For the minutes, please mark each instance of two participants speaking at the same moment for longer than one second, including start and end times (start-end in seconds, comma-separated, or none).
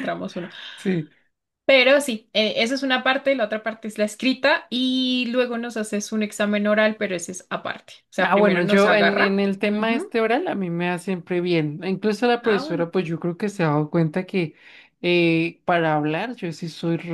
8.2-10.1